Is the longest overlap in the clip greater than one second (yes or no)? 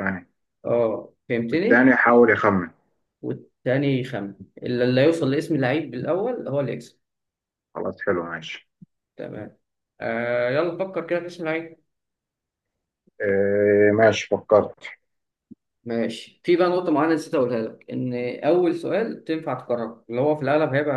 no